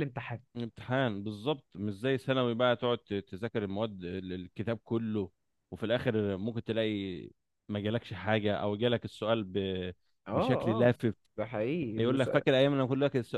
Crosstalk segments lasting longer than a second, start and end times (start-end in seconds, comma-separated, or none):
none